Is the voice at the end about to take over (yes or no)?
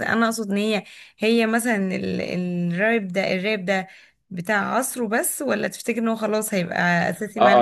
yes